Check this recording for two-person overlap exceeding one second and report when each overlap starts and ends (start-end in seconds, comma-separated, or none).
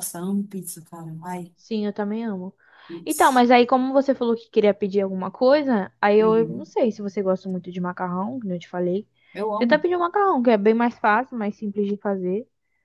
none